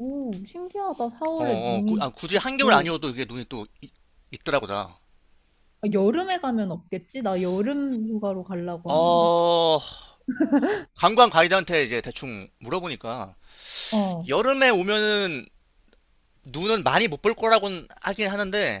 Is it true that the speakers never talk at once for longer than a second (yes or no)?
no